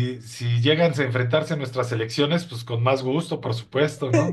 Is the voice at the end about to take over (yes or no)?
yes